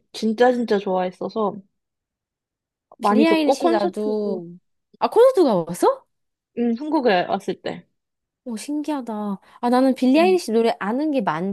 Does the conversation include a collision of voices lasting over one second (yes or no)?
yes